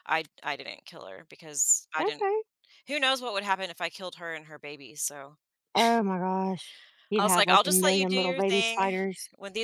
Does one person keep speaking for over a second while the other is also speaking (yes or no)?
yes